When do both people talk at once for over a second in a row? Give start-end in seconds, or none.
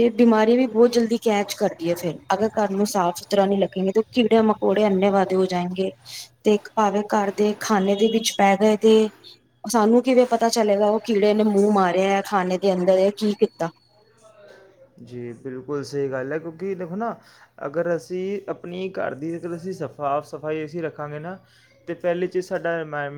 none